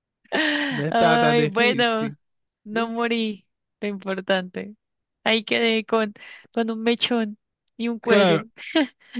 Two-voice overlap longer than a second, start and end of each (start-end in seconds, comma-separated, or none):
0.9-2.1